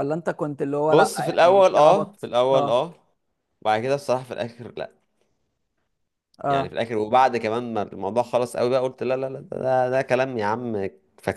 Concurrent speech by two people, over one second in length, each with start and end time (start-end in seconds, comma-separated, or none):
0.9-2.9